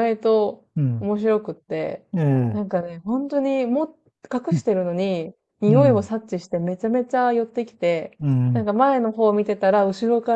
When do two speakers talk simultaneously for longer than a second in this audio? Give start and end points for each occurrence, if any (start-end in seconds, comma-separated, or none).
none